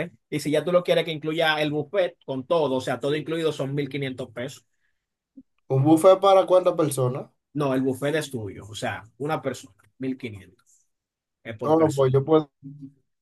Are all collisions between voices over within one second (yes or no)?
yes